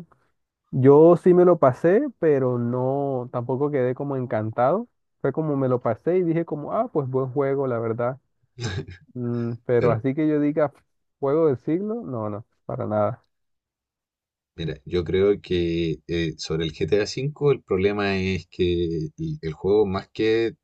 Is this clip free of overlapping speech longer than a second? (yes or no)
yes